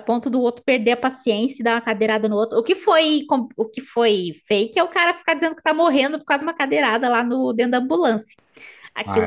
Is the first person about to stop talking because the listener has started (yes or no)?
yes